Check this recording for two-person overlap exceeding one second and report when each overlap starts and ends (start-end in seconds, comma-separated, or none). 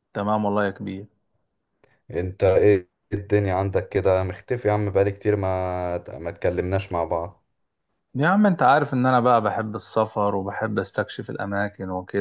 none